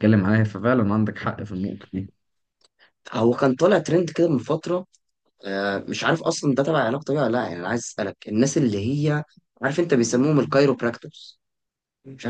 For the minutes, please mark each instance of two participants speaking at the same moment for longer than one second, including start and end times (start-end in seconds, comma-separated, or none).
none